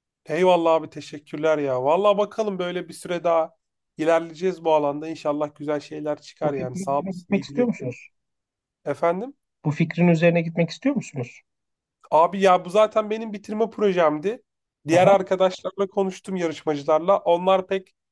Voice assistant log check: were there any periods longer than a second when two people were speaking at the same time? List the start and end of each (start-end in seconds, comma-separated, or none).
6.4-8.0